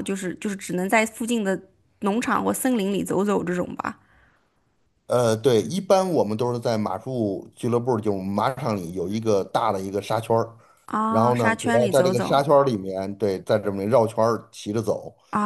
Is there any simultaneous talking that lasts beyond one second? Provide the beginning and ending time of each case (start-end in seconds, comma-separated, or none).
11.1-12.4